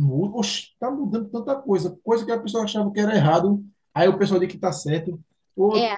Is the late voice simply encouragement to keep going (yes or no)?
yes